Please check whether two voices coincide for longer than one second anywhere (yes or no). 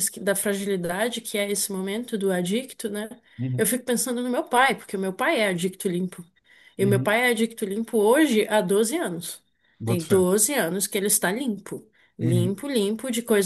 no